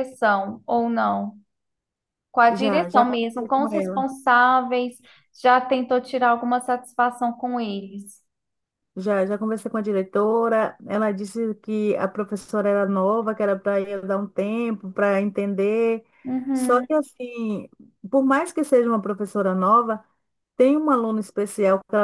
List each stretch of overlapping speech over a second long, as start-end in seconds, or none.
2.5-4.1